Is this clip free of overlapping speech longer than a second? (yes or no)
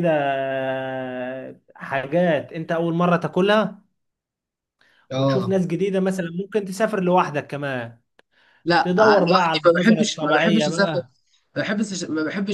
no